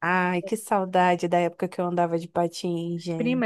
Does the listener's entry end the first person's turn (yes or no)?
yes